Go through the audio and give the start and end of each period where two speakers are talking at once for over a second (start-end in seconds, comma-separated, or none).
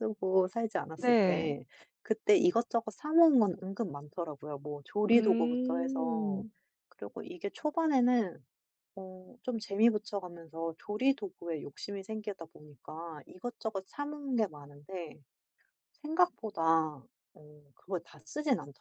5.1-6.5